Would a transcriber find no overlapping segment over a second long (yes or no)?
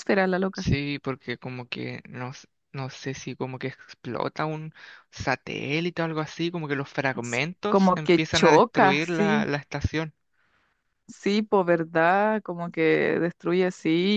no